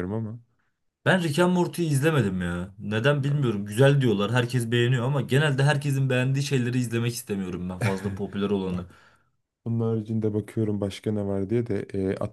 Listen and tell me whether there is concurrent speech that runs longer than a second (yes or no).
no